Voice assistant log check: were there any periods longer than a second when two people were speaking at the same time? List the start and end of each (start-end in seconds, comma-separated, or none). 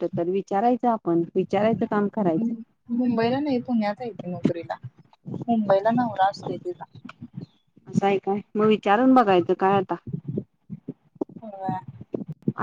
none